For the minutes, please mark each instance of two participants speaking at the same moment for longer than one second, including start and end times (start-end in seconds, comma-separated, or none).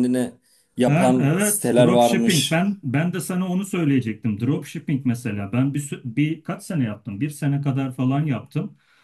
0.9-2.6